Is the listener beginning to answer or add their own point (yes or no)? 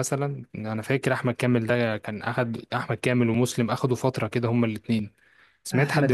yes